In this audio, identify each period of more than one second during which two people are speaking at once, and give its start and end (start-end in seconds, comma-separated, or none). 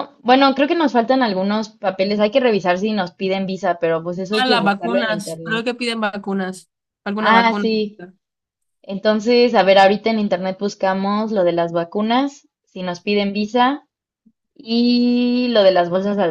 4.3-5.7